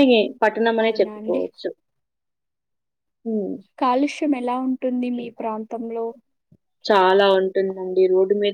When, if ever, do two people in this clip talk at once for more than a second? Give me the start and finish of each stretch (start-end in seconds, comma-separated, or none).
none